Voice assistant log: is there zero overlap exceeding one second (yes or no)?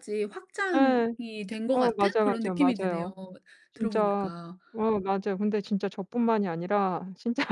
no